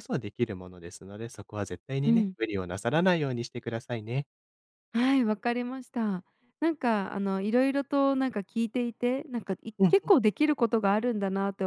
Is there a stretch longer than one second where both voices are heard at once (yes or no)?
no